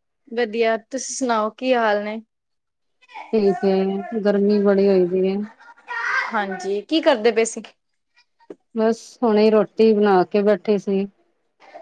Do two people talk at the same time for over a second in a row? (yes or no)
no